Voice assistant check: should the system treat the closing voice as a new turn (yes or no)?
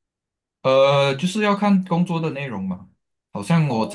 no